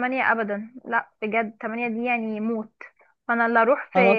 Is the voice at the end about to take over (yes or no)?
no